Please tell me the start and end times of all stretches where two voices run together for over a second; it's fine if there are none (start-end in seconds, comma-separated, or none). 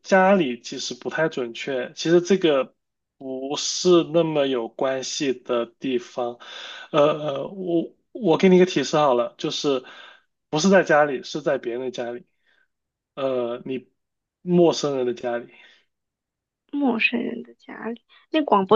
none